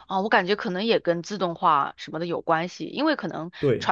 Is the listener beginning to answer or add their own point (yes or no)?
no